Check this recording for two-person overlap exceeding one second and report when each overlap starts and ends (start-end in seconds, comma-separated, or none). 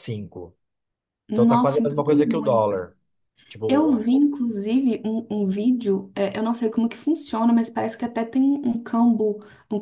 1.3-2.9